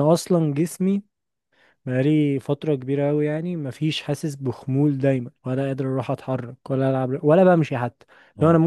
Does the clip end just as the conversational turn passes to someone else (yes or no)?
no